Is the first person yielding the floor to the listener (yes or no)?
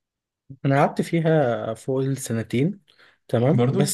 no